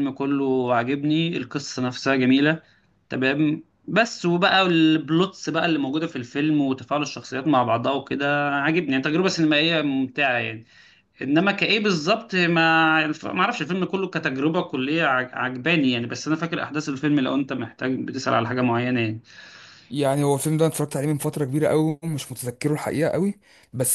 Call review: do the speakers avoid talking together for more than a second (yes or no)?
yes